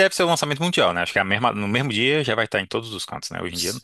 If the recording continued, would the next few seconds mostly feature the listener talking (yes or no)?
yes